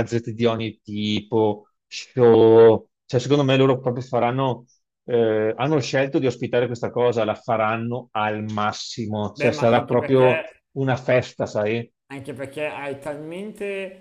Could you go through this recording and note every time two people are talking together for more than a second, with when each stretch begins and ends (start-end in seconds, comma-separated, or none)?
9.3-10.6